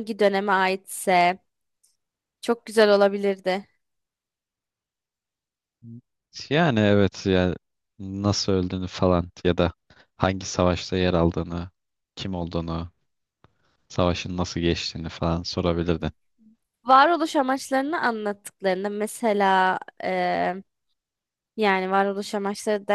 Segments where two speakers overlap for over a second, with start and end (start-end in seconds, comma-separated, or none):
none